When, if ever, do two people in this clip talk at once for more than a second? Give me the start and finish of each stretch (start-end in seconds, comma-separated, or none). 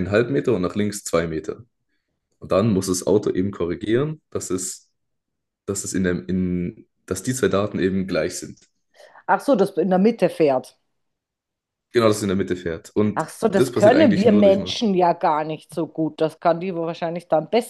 13.1-14.9